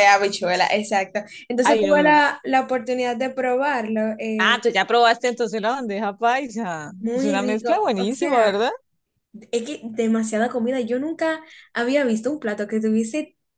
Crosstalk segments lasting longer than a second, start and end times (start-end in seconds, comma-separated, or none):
7.0-8.5